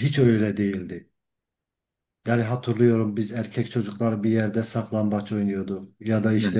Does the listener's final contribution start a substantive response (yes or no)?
no